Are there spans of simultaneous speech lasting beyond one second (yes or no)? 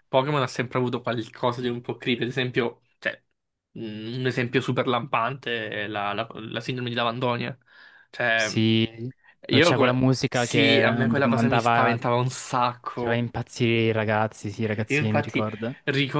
yes